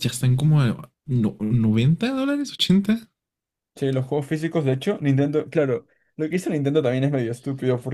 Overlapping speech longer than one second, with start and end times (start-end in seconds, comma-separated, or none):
none